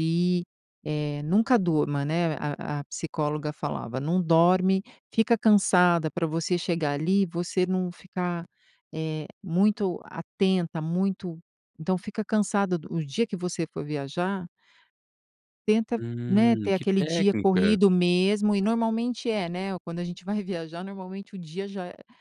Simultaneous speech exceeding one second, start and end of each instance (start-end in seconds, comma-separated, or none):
16.0-17.8